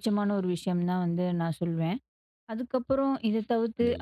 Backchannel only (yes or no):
yes